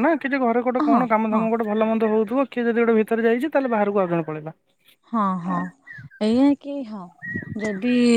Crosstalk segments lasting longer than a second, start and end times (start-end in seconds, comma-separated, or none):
none